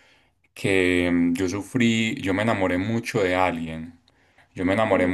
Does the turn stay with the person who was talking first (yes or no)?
yes